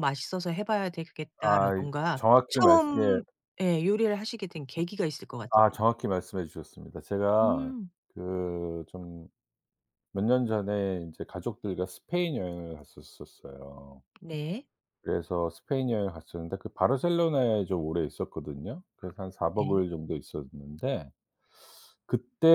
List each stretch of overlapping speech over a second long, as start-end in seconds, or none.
1.4-3.2